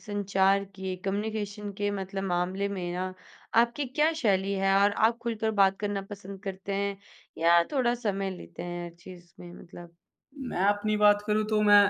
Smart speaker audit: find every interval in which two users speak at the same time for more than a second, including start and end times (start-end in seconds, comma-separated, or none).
none